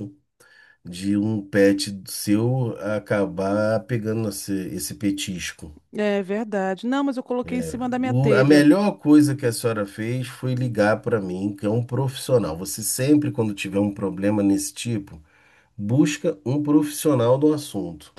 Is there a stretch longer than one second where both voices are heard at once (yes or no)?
yes